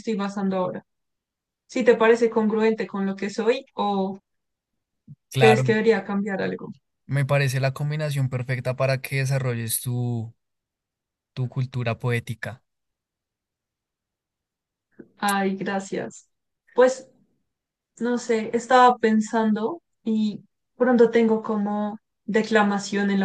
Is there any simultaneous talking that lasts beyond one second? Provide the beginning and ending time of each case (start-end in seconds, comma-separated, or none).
none